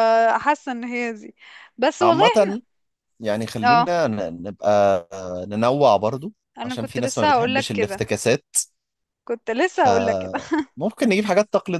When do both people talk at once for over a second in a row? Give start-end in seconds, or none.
6.6-8.0